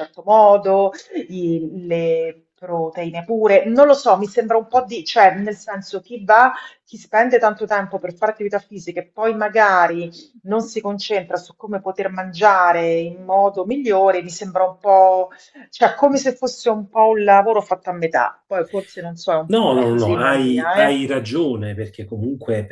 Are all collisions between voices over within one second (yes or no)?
no